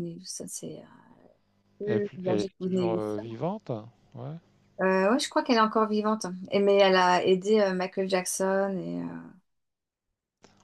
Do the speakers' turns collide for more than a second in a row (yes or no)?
yes